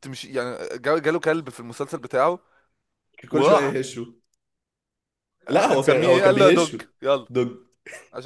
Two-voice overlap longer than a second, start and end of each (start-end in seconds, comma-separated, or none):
5.5-6.8